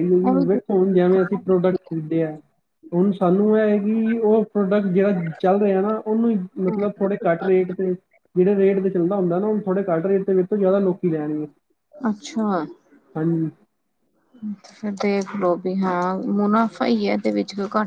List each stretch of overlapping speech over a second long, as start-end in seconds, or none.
none